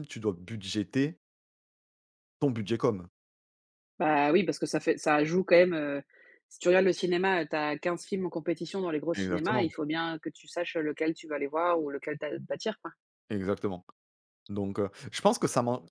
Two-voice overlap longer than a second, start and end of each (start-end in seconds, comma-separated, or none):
none